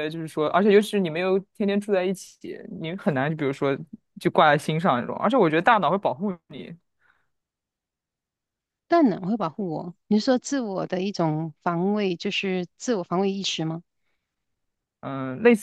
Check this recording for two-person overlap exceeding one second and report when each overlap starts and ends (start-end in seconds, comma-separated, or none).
none